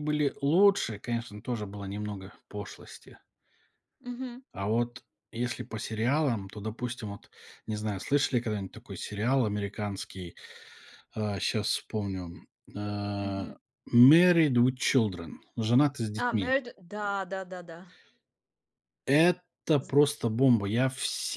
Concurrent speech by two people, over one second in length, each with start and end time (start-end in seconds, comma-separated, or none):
none